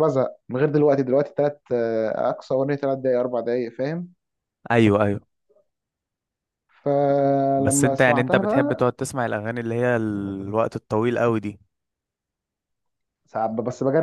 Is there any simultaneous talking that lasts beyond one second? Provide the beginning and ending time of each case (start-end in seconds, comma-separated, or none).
7.6-8.9